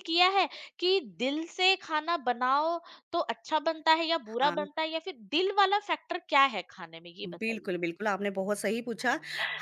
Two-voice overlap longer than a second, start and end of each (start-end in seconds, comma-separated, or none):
none